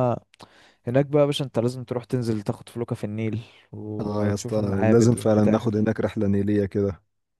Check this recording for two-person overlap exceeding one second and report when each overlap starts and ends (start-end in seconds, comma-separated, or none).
4.0-5.9